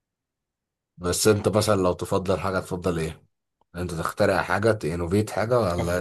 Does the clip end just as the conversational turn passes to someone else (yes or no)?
yes